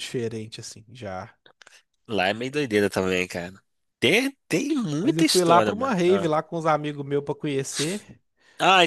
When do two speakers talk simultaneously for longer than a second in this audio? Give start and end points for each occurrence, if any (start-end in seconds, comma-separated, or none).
5.0-6.3